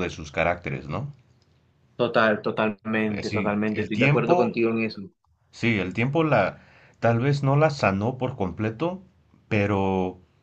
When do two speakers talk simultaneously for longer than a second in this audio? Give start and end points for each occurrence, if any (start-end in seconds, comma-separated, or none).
3.1-4.5